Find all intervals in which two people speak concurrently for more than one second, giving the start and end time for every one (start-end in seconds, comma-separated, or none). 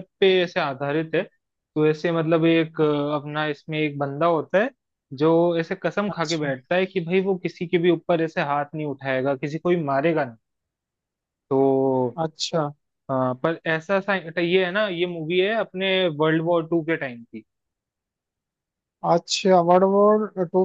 none